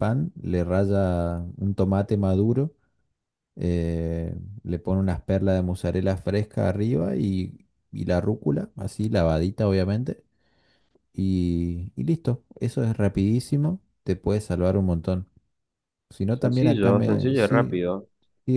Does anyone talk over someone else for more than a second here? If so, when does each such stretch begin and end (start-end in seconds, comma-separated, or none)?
16.3-17.8